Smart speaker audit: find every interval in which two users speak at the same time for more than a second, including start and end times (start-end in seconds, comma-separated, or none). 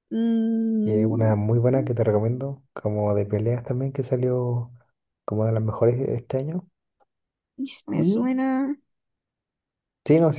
none